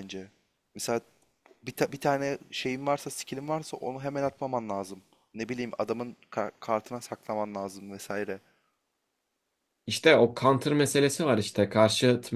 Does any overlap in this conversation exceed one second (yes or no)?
no